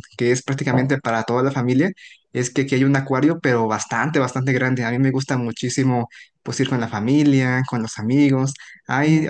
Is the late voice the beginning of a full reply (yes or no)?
no